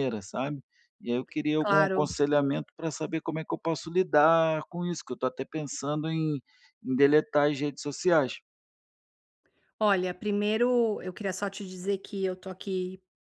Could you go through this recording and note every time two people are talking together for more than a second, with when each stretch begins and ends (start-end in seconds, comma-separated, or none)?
none